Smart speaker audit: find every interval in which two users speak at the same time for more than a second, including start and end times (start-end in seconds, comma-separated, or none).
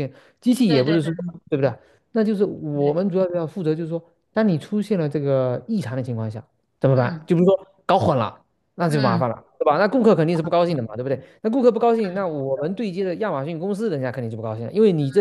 none